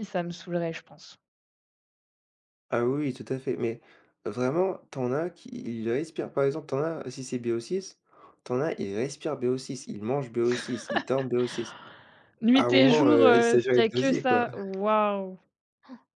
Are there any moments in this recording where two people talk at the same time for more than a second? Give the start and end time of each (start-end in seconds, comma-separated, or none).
12.5-14.4